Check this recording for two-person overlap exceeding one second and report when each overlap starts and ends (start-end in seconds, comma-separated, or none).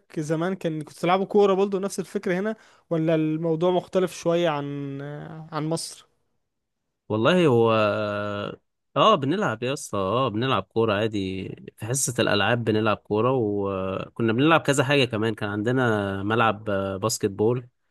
none